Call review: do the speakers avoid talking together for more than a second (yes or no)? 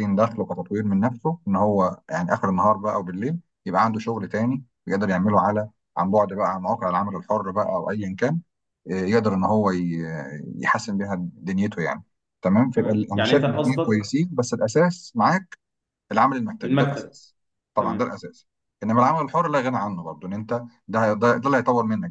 no